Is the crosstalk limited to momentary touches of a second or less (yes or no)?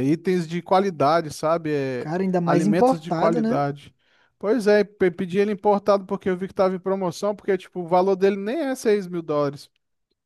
no